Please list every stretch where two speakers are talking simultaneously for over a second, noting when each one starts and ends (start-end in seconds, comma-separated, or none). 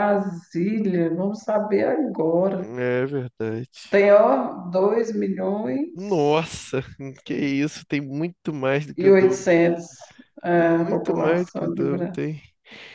10.6-12.2